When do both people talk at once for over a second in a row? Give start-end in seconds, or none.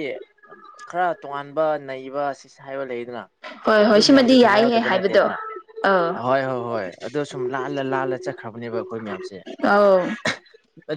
3.9-5.3